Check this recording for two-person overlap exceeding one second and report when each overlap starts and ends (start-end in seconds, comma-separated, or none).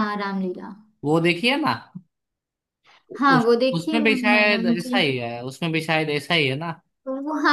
3.3-5.0